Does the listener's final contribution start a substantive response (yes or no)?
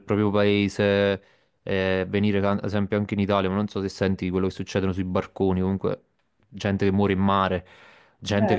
no